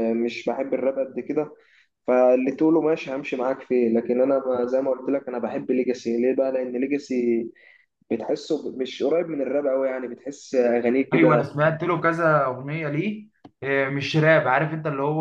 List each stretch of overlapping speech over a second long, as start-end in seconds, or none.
none